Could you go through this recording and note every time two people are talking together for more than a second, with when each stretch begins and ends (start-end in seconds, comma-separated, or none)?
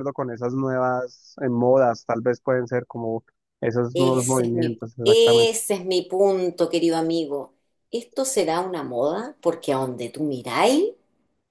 3.9-5.5